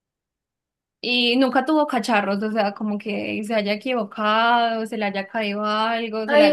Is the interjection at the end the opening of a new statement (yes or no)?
yes